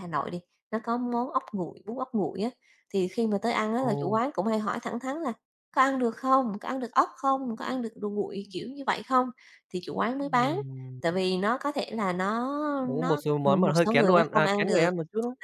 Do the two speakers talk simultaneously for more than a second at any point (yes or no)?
yes